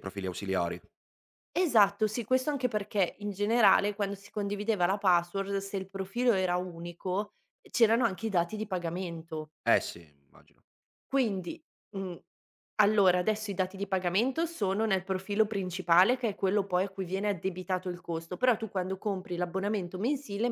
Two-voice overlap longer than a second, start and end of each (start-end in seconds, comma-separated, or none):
none